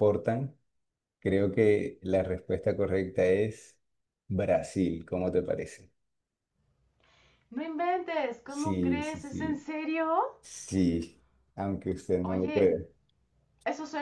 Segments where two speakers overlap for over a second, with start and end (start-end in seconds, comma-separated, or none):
8.5-9.7